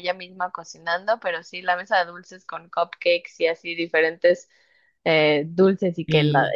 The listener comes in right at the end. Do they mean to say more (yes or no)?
no